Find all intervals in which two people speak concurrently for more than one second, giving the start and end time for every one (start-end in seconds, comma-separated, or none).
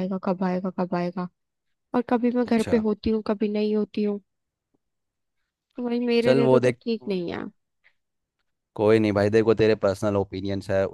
none